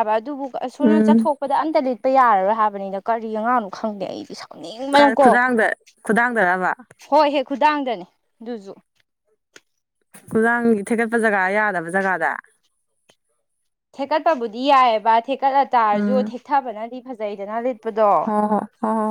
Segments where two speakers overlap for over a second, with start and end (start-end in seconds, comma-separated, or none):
none